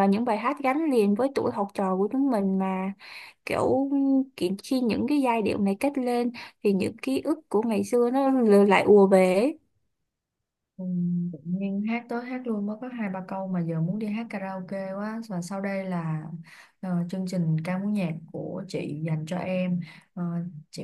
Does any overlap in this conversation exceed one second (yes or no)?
no